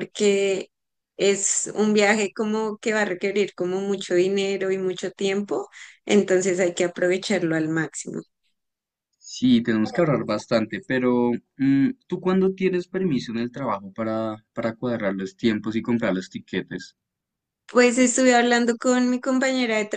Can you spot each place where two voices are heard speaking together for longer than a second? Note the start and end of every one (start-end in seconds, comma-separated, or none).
none